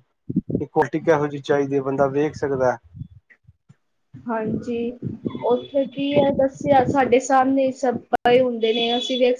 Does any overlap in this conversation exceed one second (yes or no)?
no